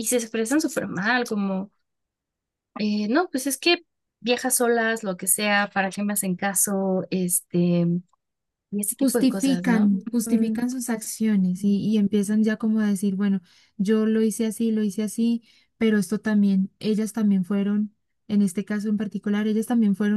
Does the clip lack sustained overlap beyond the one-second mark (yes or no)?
no